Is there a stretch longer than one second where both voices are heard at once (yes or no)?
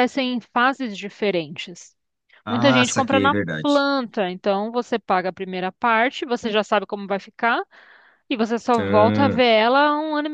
yes